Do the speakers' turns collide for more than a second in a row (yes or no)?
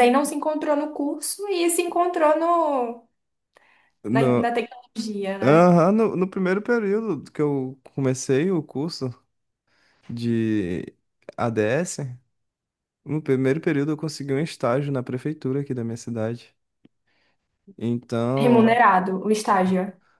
no